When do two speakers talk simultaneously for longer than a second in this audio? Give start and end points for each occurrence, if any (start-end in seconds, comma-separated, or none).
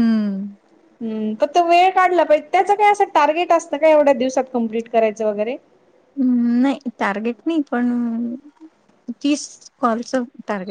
none